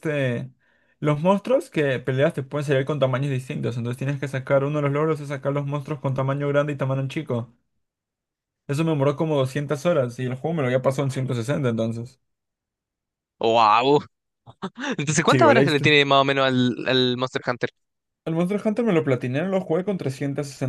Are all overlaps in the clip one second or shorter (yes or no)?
yes